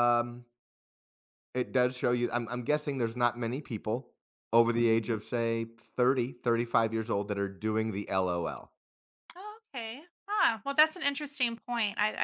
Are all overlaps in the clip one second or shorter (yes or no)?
yes